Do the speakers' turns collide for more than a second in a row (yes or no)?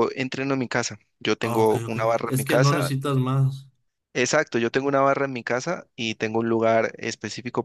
yes